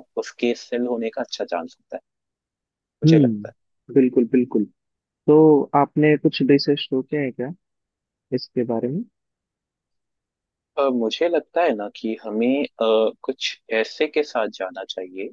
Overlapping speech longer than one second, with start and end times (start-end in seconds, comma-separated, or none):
none